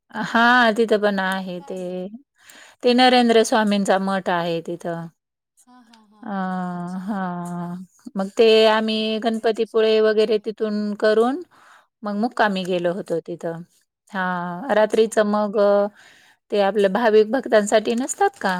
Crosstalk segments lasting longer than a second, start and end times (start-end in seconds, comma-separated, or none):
9.0-10.7